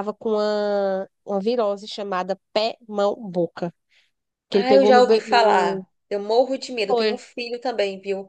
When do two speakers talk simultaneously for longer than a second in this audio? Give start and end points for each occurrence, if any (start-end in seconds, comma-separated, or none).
4.5-5.8